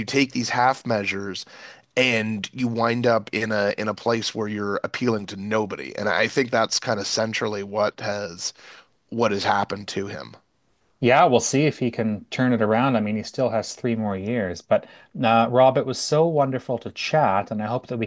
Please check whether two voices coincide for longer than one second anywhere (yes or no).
no